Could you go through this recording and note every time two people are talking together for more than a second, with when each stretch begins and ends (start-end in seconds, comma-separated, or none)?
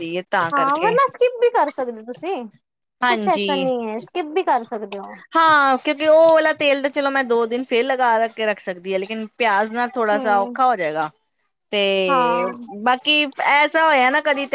none